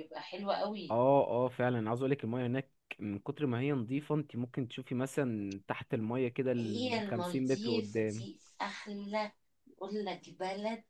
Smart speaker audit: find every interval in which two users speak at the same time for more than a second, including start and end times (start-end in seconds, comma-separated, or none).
6.6-8.3